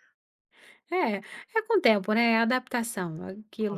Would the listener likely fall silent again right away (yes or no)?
yes